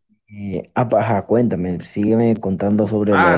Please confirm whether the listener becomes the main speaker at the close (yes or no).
yes